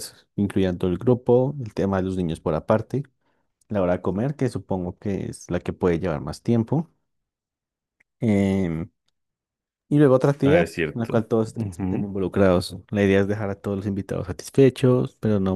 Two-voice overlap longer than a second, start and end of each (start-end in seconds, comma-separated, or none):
10.4-12.1